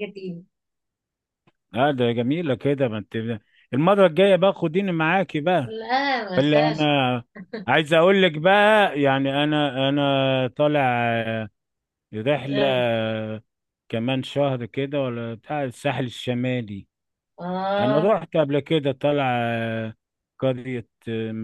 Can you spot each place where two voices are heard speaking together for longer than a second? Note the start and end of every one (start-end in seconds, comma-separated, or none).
none